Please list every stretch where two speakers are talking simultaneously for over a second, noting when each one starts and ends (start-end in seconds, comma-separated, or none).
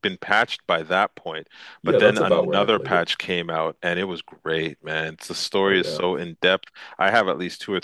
1.8-3.1